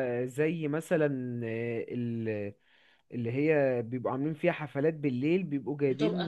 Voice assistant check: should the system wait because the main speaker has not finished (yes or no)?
yes